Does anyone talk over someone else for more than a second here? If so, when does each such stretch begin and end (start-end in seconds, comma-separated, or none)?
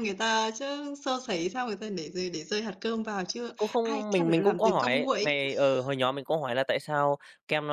3.6-5.4